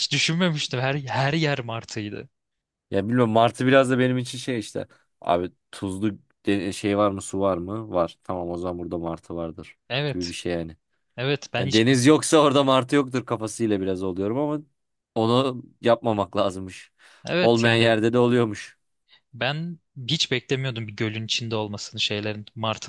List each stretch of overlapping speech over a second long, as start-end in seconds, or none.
none